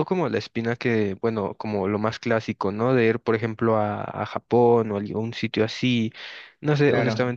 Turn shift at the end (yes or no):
no